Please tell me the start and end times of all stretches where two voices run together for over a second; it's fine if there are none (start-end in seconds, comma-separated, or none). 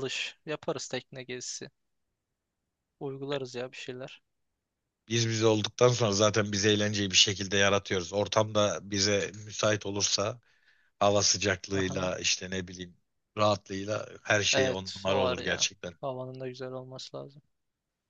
14.5-15.9